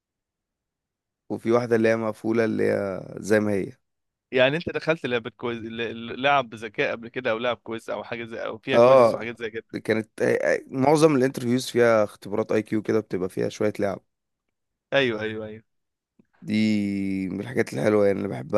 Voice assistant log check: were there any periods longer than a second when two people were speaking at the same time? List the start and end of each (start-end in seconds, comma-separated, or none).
none